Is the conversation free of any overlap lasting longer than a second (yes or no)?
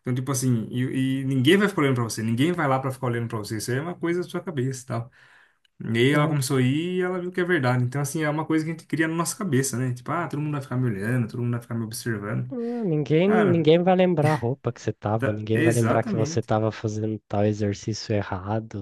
no